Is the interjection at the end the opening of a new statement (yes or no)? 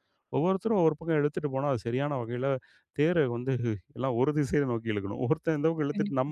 no